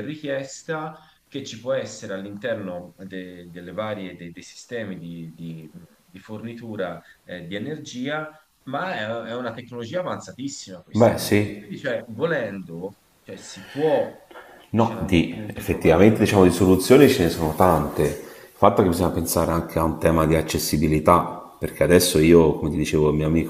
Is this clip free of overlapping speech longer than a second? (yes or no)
no